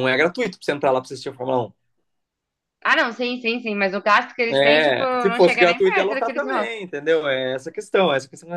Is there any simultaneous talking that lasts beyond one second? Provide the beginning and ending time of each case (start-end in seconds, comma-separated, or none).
4.5-6.7